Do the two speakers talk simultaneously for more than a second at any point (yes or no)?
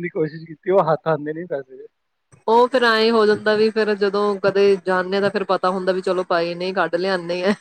no